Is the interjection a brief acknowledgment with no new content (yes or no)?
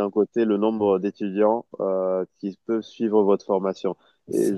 yes